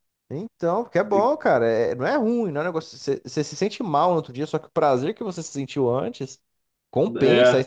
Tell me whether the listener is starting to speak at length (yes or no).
no